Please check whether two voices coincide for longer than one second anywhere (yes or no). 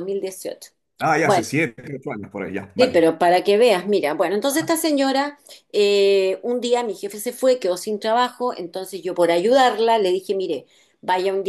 no